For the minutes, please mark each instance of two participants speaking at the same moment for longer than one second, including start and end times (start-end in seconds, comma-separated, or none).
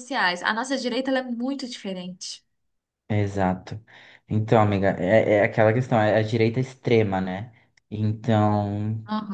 none